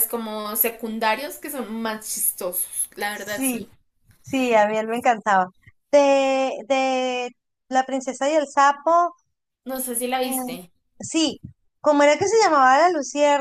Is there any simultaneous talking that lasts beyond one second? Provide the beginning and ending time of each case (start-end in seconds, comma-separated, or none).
none